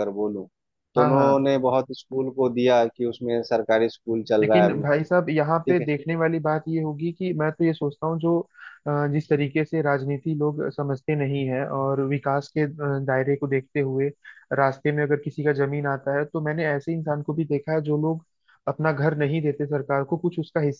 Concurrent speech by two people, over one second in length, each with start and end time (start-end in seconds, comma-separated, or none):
none